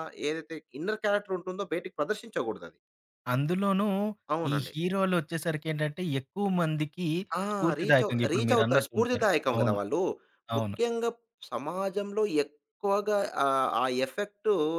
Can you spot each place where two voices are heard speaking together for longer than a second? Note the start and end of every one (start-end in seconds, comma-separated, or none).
7.8-9.8